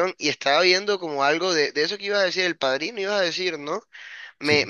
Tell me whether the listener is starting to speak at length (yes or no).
no